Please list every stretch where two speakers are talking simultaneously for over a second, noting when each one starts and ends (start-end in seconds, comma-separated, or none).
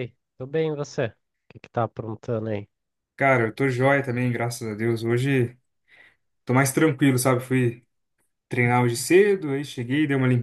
none